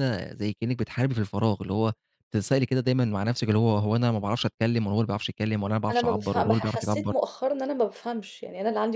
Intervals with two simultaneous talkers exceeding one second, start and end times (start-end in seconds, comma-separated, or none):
5.9-7.1